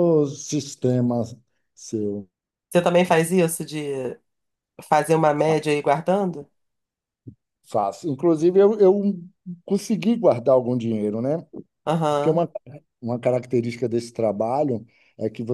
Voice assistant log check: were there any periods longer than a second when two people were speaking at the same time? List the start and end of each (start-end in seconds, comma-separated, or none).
none